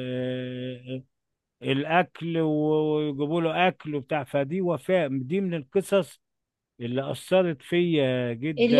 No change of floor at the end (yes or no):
no